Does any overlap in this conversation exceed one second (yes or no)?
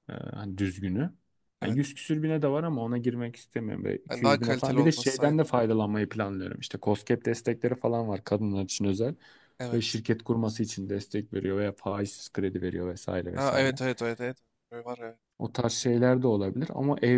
yes